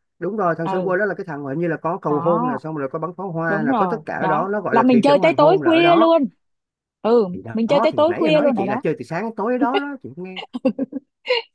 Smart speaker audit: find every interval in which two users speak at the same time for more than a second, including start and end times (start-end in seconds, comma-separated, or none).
3.5-6.2, 7.3-8.8